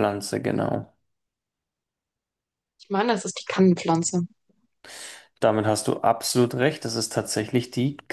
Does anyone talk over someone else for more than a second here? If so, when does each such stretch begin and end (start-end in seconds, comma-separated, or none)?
none